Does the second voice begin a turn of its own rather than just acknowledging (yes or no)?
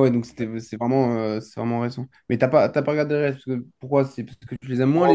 yes